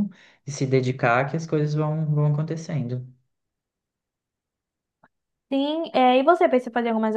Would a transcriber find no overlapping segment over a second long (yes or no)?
yes